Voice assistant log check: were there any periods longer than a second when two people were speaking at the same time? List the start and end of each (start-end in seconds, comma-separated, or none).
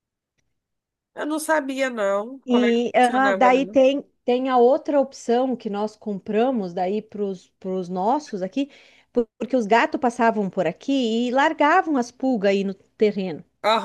2.4-3.8